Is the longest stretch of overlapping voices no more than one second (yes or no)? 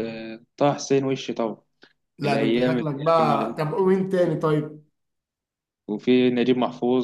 no